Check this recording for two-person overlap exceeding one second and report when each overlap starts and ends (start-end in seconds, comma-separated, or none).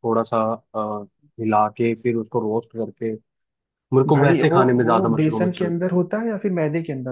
4.1-6.0